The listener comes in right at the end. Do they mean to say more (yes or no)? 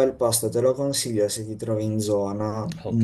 yes